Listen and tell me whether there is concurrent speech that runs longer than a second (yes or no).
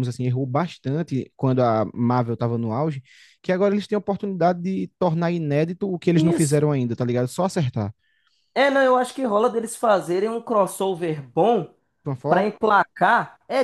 no